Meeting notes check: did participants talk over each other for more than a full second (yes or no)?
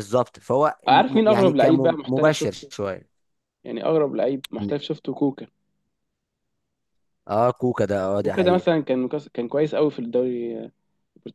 yes